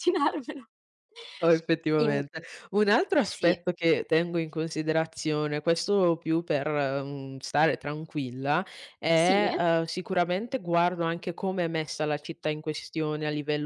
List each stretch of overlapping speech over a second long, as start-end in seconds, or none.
none